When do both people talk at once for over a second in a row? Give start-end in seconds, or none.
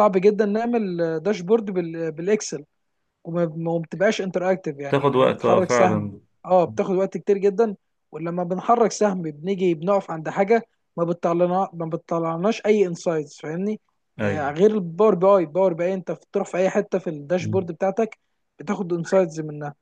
4.9-6.1